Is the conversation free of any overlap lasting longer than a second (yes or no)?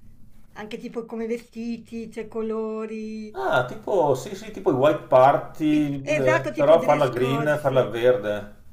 no